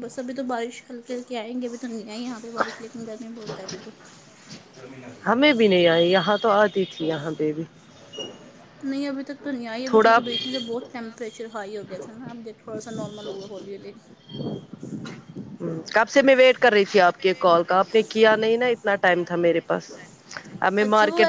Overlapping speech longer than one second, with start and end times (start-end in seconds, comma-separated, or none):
none